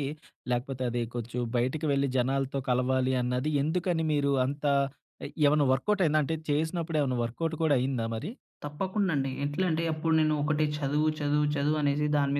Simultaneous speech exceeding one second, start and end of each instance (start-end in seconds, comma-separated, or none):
none